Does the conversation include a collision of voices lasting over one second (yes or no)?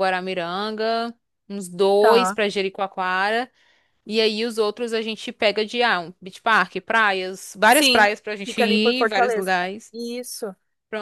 yes